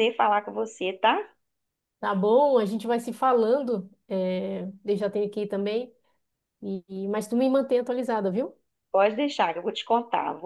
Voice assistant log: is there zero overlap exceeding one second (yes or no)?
yes